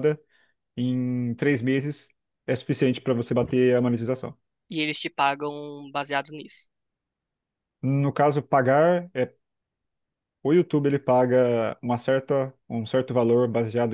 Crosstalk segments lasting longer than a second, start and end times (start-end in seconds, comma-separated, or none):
none